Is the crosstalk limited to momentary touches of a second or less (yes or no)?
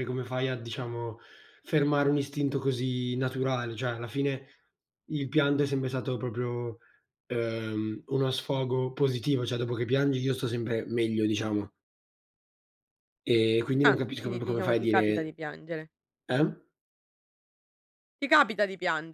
no